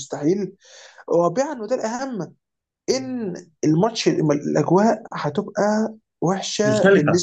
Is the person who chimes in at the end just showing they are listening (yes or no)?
yes